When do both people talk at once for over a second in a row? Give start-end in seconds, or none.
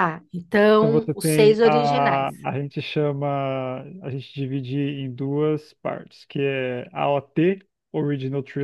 0.8-2.3